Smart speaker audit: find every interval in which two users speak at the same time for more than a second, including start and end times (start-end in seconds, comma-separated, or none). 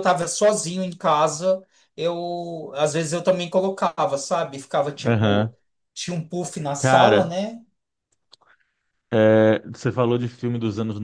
none